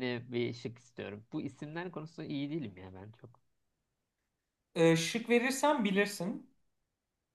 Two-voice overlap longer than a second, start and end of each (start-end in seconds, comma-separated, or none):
none